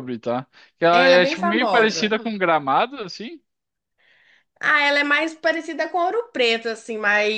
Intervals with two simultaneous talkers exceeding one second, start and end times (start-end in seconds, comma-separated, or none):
0.9-2.1